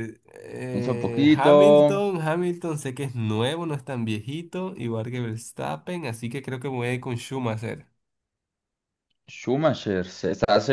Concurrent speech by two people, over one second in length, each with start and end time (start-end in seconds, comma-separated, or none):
0.7-2.1